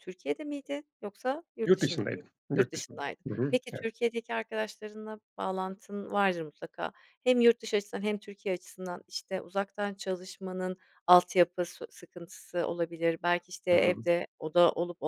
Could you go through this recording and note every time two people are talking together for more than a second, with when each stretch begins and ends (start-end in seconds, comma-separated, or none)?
1.6-3.9